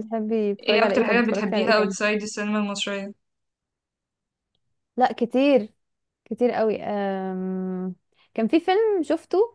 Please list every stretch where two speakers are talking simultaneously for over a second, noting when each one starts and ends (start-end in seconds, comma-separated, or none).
0.6-1.9